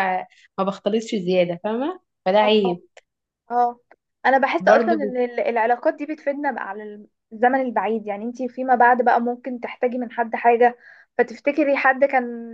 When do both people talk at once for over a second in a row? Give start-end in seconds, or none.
none